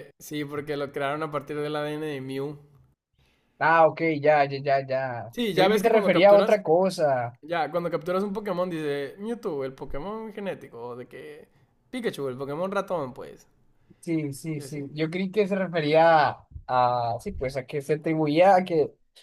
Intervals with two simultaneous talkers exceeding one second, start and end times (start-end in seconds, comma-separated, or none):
5.3-6.6